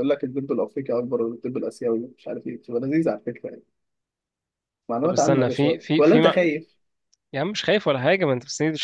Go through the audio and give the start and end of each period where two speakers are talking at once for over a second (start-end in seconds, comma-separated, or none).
5.0-6.5